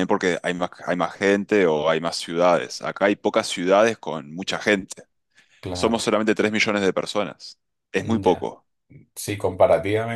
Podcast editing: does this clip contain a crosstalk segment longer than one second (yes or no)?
no